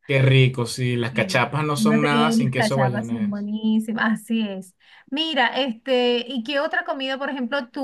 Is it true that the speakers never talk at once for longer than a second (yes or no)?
no